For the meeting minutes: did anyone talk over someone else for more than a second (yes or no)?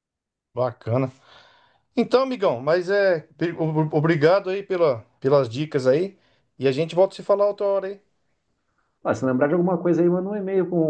no